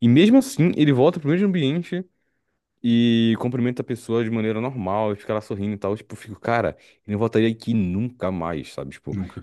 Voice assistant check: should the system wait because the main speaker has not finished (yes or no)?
yes